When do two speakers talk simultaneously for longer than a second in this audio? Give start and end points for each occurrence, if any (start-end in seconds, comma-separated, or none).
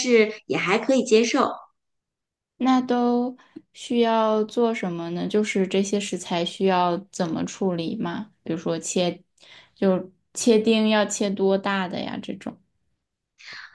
none